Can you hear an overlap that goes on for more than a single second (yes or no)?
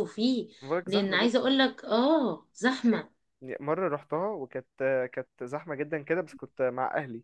no